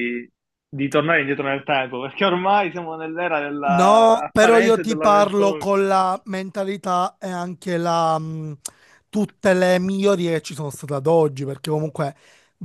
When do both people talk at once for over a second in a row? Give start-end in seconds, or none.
3.6-5.7